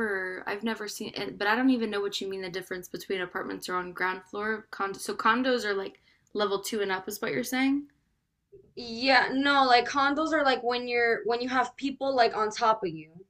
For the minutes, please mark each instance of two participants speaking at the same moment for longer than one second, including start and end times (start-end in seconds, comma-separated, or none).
none